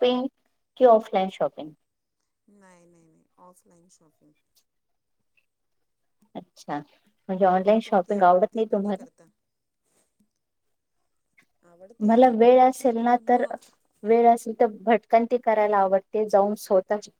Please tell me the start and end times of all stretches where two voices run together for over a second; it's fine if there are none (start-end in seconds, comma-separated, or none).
7.5-9.0